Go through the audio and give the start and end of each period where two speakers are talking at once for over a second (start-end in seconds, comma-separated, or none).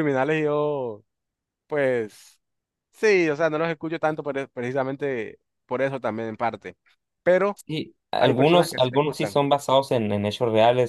8.2-9.4